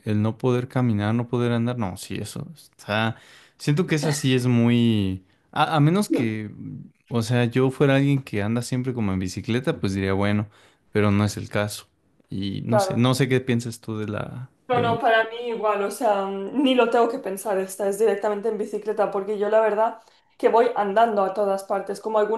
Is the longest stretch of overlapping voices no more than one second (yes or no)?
yes